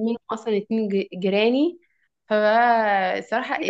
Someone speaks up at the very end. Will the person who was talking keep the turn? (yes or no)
no